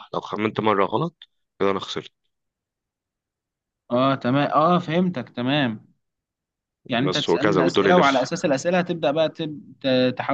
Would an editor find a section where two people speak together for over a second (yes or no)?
yes